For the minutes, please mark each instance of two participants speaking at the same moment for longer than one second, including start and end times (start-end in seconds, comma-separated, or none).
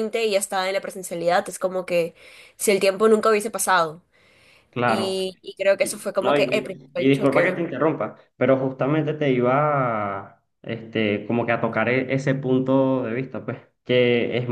6.2-7.6